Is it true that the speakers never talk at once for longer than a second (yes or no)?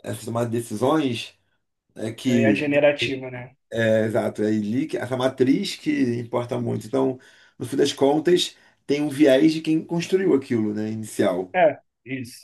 yes